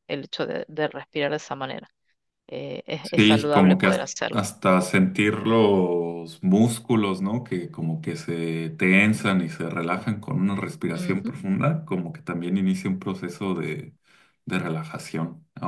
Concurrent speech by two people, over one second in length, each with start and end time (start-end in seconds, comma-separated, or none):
3.2-4.5